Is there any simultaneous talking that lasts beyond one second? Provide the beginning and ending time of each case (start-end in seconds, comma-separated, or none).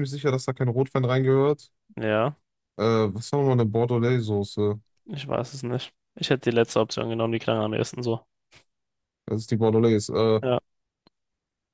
none